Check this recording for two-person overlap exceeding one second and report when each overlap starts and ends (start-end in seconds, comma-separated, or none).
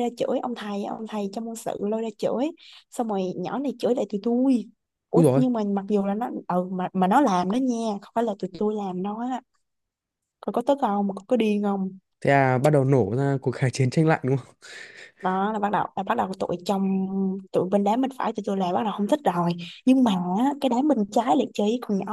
none